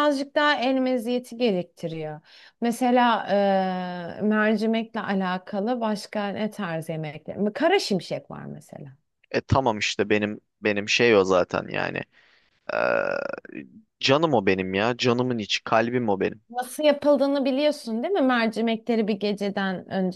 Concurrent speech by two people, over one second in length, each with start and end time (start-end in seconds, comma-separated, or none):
none